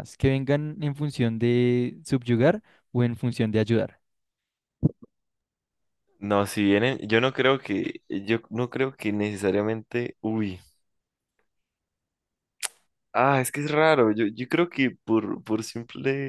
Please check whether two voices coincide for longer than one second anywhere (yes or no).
no